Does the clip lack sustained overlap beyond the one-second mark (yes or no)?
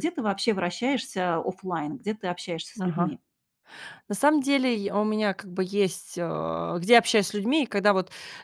yes